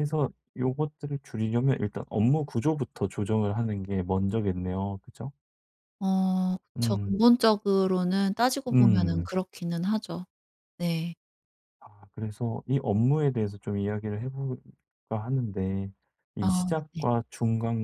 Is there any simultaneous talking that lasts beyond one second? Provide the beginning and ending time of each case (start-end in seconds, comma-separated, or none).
none